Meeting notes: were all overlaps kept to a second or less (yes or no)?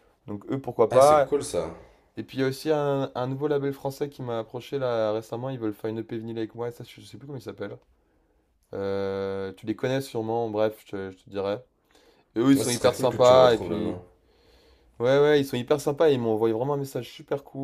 no